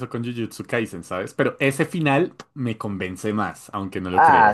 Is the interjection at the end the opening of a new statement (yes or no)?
yes